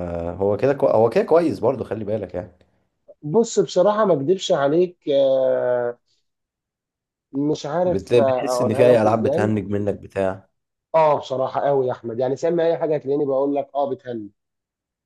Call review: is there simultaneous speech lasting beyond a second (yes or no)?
yes